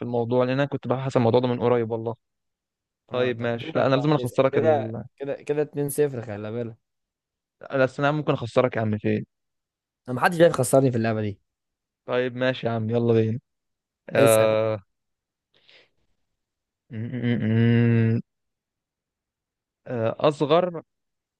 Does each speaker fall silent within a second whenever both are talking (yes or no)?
no